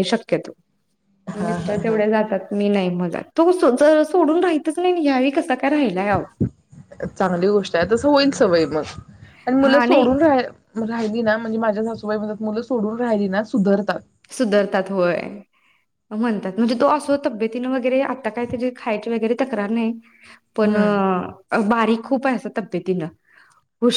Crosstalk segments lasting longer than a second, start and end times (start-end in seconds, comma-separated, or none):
none